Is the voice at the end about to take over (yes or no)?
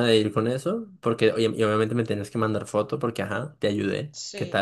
yes